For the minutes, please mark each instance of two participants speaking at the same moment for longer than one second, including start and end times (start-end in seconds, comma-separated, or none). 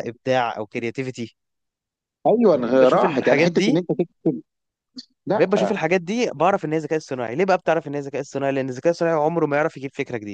2.5-3.8